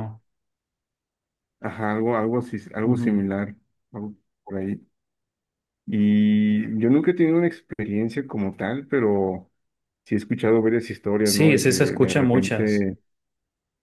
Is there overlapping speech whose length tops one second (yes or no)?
yes